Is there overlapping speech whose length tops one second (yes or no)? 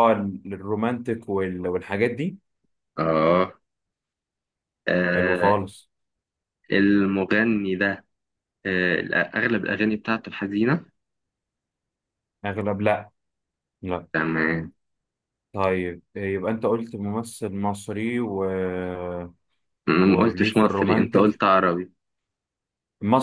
yes